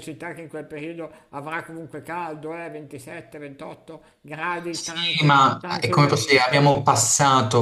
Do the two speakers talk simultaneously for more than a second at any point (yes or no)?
yes